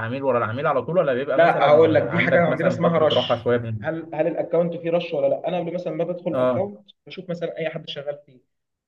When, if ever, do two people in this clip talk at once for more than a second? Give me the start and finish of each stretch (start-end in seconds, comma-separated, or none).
1.4-3.8